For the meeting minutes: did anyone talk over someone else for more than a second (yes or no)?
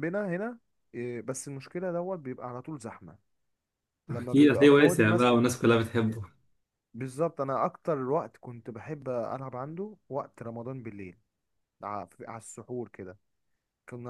yes